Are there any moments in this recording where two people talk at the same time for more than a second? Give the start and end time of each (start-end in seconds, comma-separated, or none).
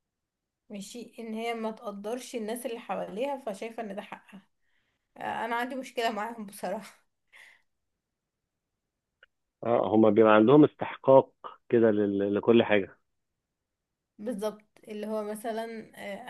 none